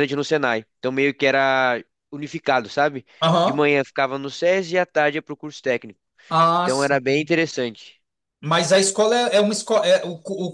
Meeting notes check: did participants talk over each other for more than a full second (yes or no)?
no